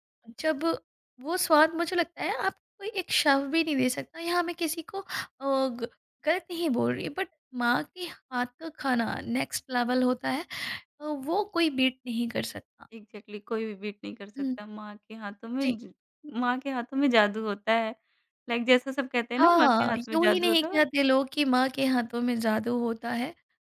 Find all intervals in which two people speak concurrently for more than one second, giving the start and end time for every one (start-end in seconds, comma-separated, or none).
19.4-20.8